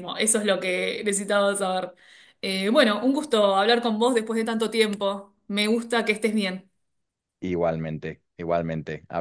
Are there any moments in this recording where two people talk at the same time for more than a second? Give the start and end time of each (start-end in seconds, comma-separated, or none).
none